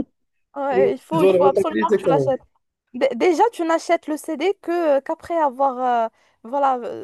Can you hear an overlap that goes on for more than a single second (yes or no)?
yes